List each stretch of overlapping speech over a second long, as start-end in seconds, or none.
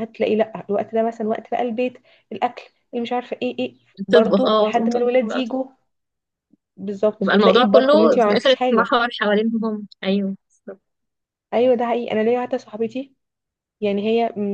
4.1-5.4, 7.2-8.9